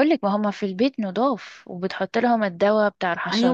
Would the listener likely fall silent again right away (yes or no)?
no